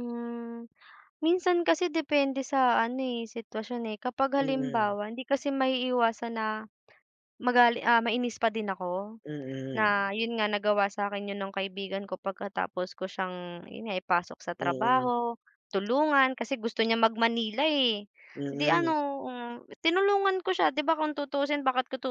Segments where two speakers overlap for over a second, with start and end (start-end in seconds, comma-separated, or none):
none